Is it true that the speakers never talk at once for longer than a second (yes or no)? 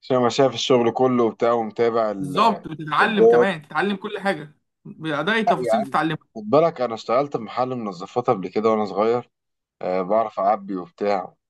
no